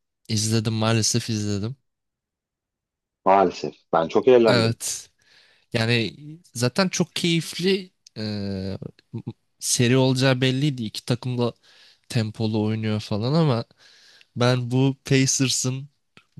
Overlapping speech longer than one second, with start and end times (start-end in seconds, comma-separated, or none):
none